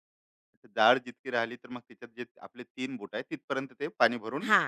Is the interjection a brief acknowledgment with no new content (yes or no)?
no